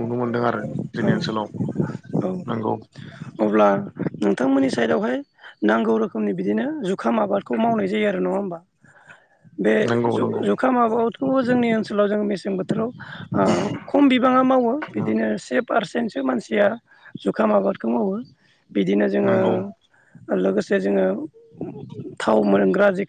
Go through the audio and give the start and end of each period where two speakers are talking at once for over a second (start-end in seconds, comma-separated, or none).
none